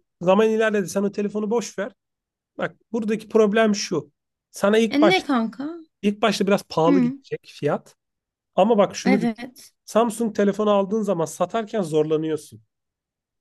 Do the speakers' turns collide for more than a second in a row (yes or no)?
no